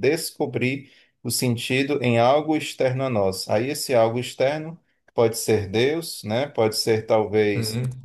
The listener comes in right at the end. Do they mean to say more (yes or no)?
no